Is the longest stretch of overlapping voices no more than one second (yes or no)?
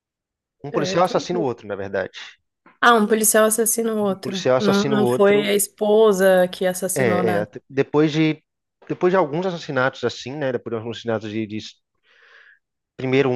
no